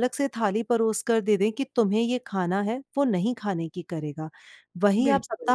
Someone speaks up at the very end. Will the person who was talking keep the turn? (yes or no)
yes